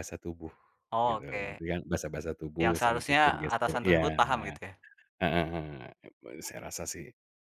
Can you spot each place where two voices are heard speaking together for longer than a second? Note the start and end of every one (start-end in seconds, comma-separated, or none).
2.6-4.5